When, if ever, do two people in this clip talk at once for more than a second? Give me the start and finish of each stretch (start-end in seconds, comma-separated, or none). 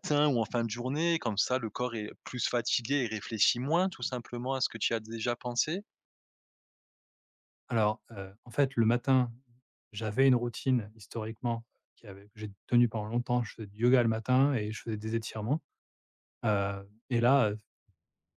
none